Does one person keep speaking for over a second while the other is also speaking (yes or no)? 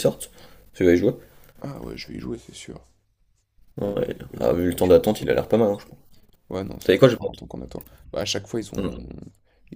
yes